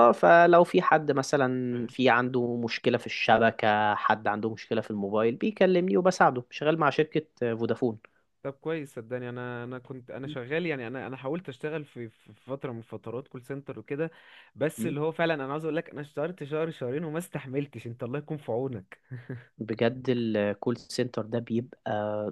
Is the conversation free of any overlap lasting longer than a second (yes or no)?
yes